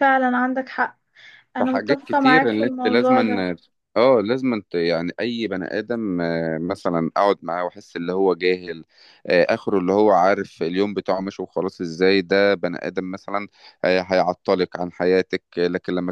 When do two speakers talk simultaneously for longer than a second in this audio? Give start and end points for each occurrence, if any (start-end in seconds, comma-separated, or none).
1.6-3.4